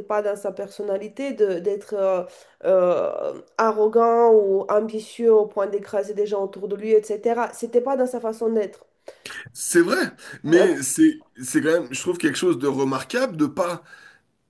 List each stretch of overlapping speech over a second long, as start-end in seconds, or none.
none